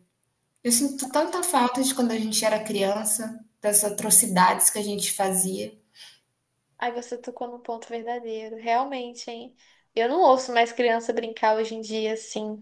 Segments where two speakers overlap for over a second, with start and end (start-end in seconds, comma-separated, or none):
none